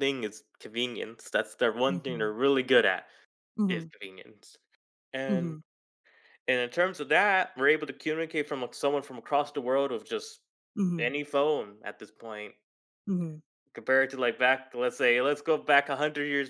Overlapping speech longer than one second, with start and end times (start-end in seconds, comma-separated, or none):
none